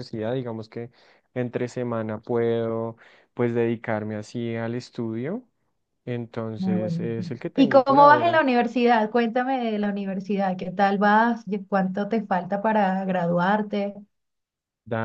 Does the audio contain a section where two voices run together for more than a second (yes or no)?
yes